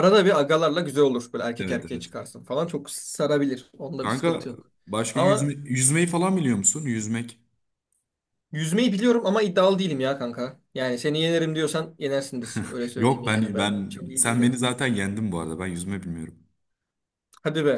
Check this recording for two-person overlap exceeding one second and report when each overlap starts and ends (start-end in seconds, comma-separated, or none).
13.0-14.6